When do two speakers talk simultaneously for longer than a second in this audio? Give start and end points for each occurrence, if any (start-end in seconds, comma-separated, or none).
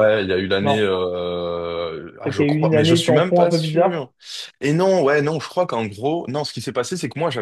2.2-4.1